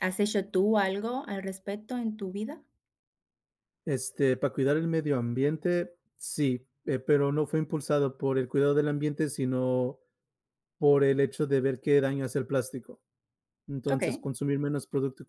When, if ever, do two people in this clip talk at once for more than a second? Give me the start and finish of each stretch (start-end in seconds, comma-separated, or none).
none